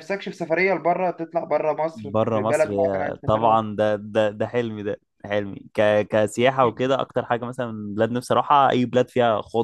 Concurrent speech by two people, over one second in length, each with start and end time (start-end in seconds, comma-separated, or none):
1.9-3.6